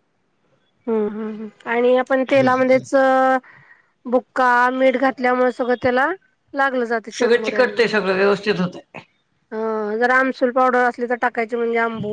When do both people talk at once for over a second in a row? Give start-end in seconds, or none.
none